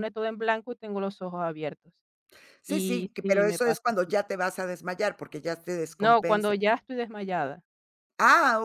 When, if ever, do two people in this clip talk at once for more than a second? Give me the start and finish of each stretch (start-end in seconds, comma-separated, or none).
2.7-4.1